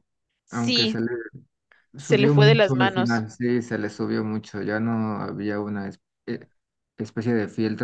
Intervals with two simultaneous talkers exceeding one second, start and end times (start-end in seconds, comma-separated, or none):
2.0-3.2